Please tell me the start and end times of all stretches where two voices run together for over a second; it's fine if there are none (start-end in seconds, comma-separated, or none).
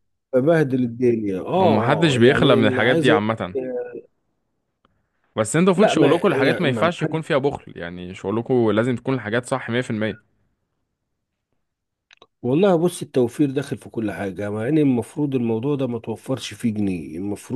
1.6-3.5, 5.7-7.2